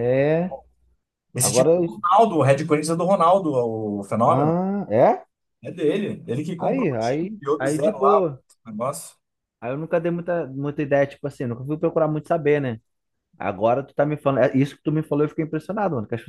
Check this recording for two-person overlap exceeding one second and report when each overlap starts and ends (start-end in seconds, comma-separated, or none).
6.6-8.4